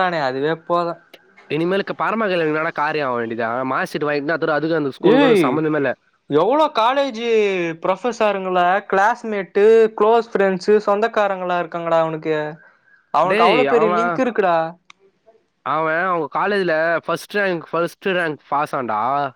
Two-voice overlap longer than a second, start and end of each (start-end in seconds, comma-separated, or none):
none